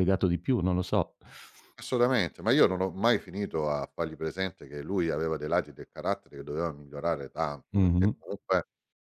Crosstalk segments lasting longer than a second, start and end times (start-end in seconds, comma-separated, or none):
none